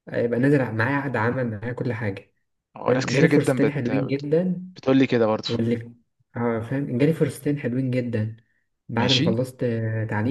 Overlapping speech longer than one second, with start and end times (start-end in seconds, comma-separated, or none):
2.9-4.3